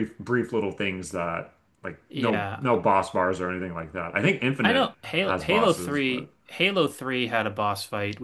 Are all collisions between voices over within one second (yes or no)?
no